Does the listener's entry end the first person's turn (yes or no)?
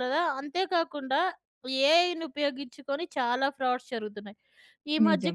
no